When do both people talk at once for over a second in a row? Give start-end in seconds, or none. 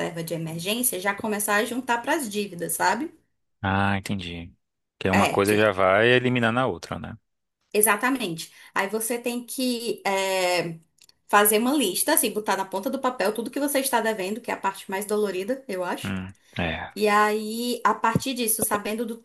none